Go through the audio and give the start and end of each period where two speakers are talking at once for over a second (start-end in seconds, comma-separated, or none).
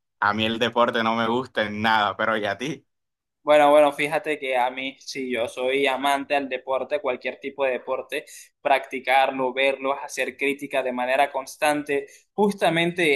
none